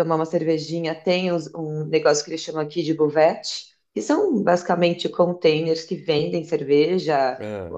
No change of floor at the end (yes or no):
yes